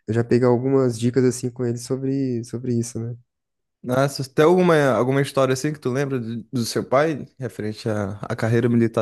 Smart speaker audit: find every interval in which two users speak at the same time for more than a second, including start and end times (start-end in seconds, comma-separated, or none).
none